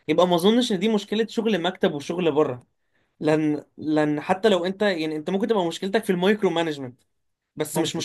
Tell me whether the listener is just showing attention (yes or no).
yes